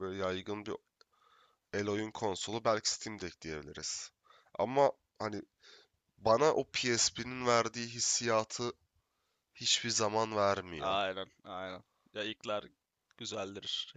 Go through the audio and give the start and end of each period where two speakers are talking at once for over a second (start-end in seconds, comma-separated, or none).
none